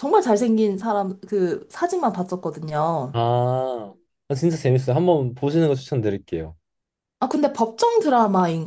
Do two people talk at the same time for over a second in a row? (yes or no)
no